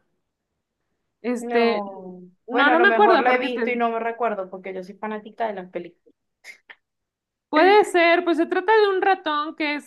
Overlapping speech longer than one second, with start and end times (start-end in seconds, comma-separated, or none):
2.5-3.8